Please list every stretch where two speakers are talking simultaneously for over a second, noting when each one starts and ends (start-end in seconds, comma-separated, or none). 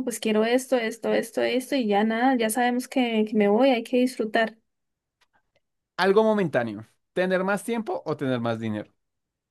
none